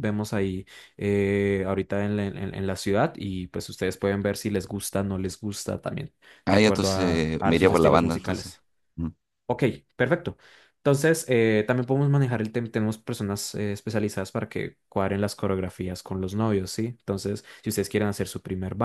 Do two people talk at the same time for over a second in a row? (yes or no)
yes